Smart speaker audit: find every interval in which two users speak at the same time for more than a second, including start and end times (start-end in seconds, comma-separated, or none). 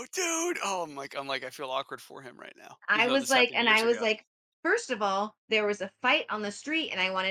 2.9-4.1